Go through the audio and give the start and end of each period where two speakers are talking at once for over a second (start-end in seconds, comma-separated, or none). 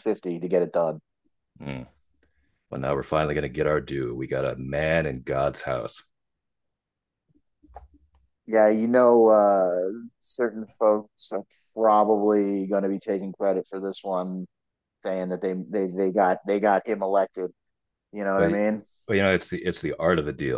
none